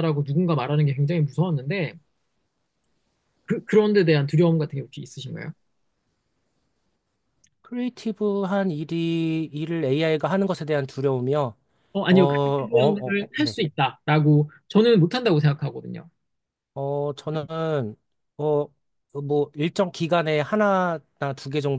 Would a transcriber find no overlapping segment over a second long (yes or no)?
no